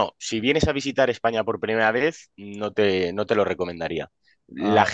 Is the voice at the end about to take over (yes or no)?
no